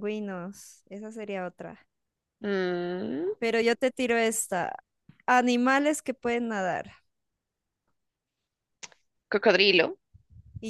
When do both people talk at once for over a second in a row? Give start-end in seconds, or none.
none